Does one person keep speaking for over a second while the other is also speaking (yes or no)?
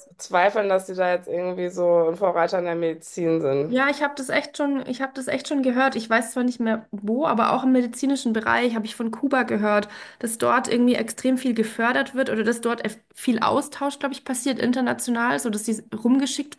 no